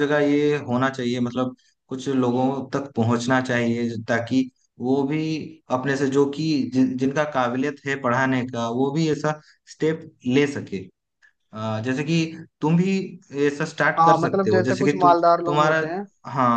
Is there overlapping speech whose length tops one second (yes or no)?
yes